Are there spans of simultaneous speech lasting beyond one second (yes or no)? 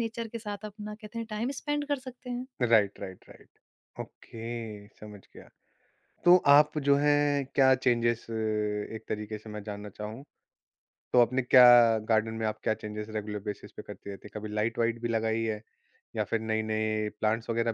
no